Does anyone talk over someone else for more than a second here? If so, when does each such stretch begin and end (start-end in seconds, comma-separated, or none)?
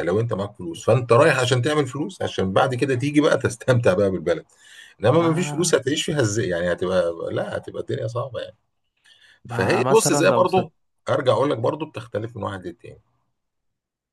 9.5-10.7